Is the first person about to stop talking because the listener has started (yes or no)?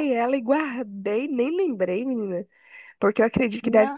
no